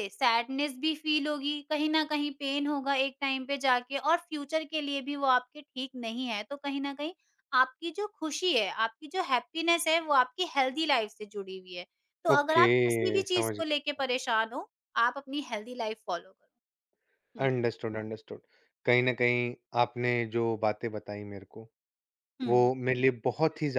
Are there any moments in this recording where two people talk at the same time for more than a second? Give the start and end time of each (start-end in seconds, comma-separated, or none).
12.3-14.3